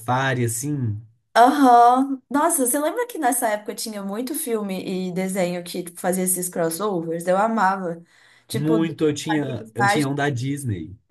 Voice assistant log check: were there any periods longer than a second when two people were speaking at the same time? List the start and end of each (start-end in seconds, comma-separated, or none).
8.5-10.1